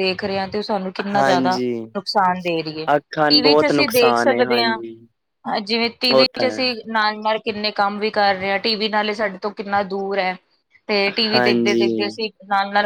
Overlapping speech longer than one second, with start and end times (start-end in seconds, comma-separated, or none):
3.3-4.8